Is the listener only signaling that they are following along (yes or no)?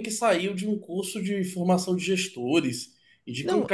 no